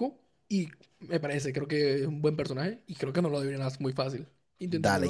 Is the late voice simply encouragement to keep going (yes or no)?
no